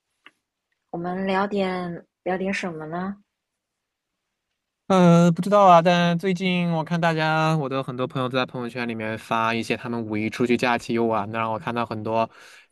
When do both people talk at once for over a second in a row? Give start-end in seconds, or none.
none